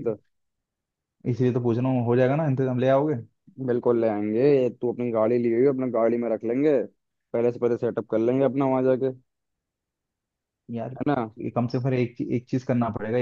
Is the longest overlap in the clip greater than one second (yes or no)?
no